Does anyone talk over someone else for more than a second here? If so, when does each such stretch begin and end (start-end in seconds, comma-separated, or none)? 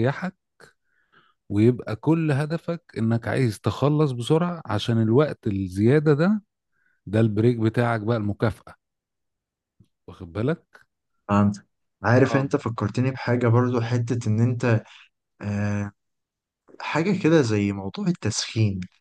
none